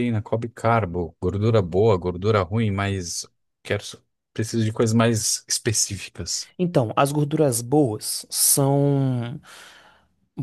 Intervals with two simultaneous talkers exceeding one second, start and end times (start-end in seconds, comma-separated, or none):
none